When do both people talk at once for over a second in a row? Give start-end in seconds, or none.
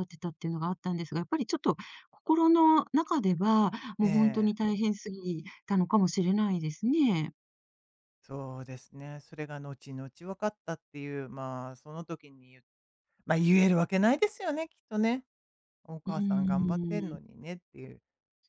16.1-17.3